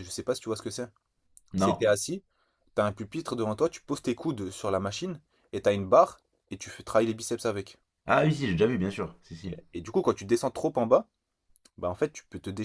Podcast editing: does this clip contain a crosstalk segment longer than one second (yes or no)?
no